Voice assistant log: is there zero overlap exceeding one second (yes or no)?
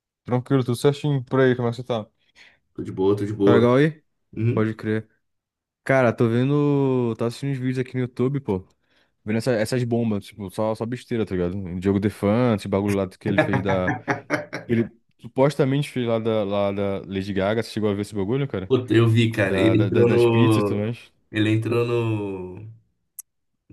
no